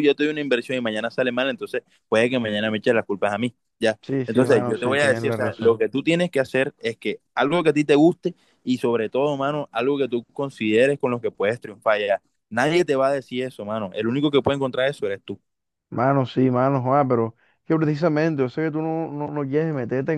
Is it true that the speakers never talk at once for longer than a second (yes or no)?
no